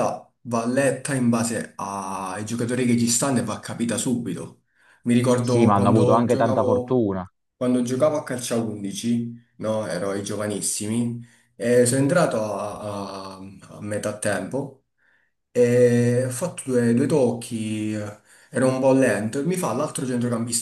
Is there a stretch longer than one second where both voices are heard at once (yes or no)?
yes